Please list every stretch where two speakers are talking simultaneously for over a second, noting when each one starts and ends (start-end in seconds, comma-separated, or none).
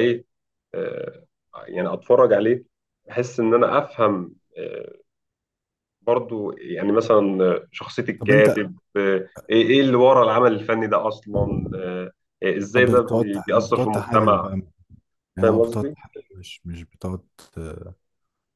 12.8-14.5